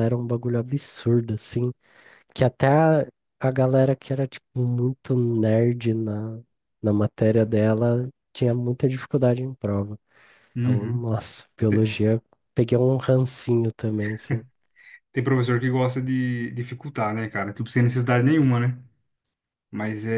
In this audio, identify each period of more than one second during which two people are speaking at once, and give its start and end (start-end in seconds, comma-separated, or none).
none